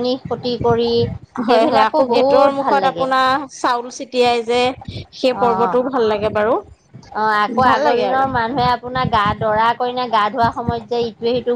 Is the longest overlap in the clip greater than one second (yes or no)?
yes